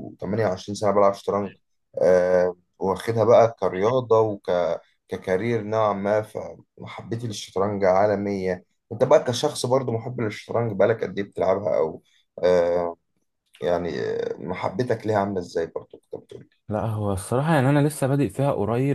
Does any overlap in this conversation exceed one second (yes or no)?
no